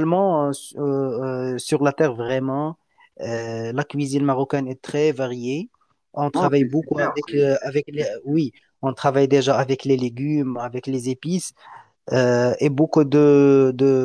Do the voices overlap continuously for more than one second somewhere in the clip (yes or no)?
yes